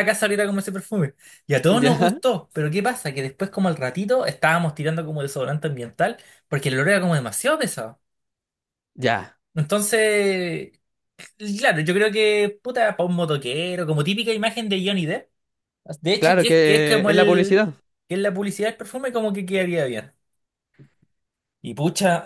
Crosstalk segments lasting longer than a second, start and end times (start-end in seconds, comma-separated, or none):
16.2-17.6